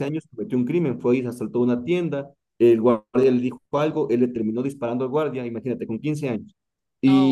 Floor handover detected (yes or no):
no